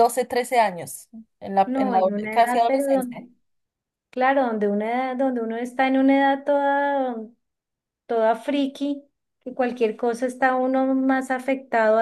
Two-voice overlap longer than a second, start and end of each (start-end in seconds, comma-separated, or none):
1.6-3.3